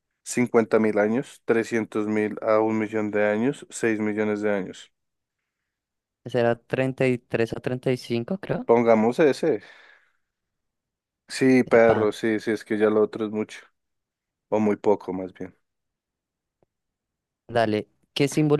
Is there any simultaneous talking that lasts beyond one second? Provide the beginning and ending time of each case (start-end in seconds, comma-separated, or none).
none